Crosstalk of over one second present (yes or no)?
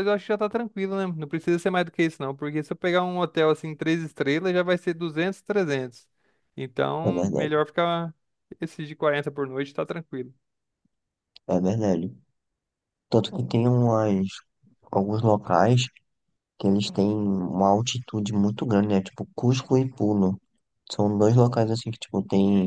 no